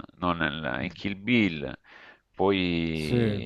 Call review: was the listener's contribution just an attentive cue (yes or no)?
yes